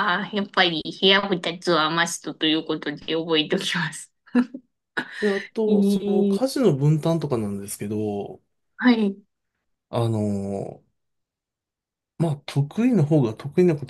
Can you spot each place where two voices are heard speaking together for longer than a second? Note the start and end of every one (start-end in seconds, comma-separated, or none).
none